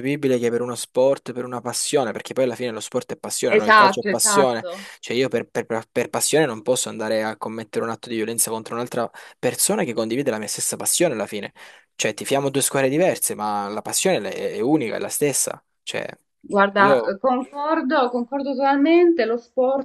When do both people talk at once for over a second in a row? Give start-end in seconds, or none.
3.5-4.9